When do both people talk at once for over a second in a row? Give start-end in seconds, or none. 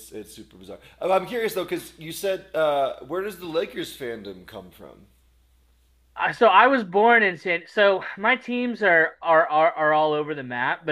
none